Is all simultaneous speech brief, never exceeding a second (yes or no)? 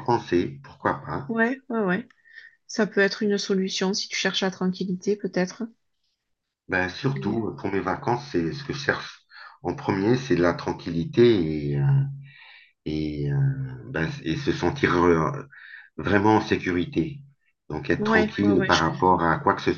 no